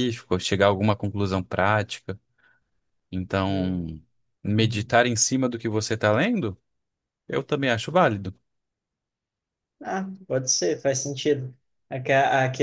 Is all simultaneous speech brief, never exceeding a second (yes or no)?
yes